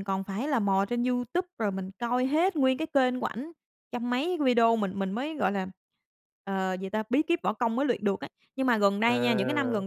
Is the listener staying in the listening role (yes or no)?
yes